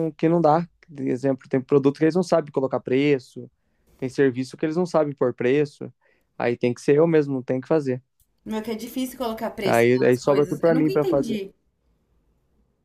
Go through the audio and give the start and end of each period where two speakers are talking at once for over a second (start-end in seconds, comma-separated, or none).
9.6-11.4